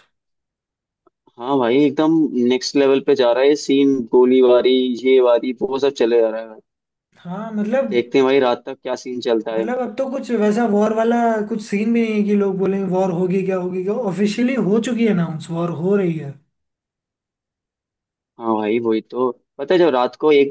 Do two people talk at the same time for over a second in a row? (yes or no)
no